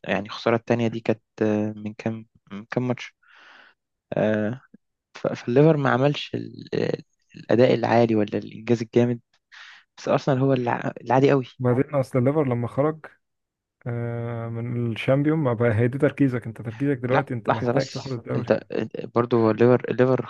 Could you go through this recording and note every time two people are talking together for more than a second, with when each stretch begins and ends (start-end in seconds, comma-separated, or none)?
17.1-18.5